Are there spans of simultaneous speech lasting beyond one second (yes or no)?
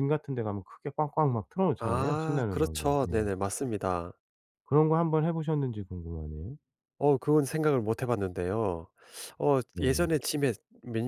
yes